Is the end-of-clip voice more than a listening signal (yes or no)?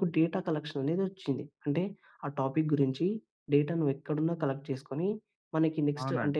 no